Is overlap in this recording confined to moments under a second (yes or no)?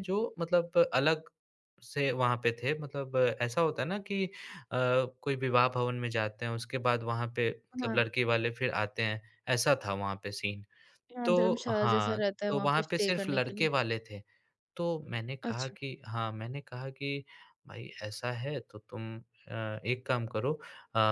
no